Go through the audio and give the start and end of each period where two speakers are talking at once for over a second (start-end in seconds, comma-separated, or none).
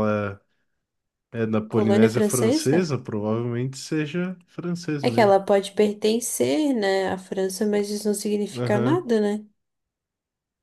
1.7-2.9